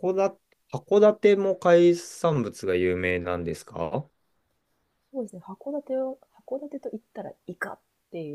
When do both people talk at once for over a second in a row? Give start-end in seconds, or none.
none